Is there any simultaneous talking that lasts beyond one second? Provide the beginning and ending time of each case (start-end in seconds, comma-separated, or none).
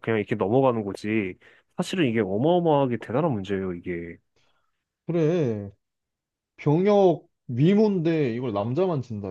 none